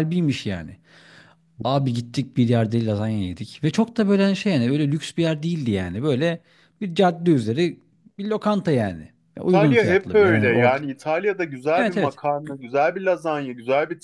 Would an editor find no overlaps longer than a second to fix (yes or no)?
no